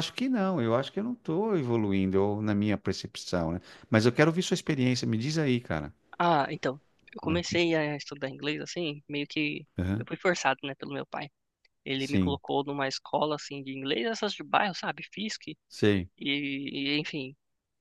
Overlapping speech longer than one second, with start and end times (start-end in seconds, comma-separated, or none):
none